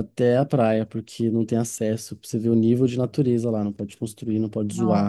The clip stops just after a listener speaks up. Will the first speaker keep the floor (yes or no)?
yes